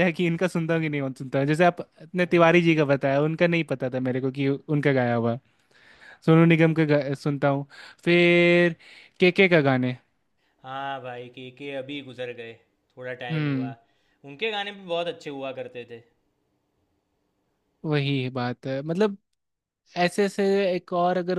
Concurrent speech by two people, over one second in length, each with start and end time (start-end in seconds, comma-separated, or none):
none